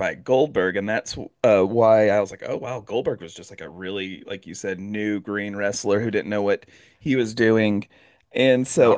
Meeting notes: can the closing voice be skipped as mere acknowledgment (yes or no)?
yes